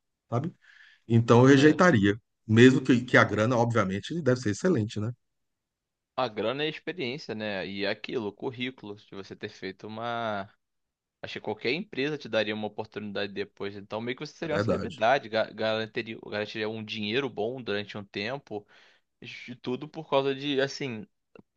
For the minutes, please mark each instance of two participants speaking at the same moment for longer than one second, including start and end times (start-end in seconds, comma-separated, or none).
none